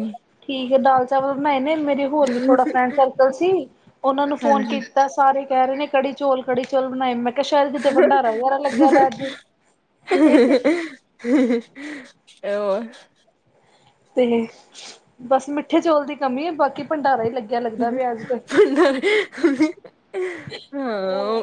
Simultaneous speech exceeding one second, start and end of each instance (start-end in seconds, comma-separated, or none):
none